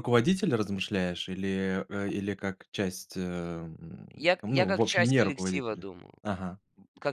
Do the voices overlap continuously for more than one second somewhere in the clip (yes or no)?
yes